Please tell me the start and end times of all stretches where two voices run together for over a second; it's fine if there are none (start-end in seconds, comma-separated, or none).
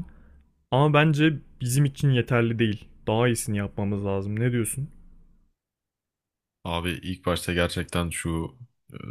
none